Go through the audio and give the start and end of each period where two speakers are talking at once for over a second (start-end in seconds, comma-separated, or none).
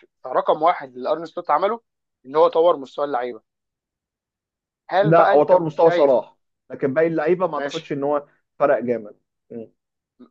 5.0-6.2